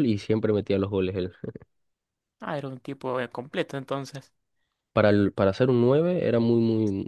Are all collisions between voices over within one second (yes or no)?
yes